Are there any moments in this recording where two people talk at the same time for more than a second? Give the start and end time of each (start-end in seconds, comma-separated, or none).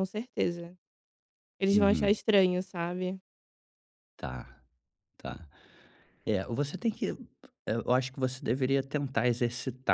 none